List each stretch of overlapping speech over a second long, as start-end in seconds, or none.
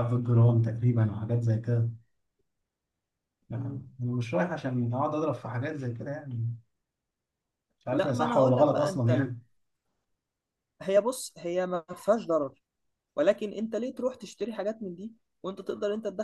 7.9-9.3